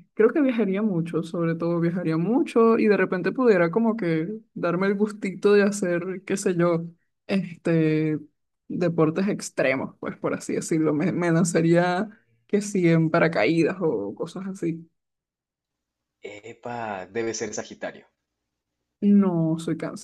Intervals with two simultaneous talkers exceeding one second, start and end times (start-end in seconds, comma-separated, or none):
none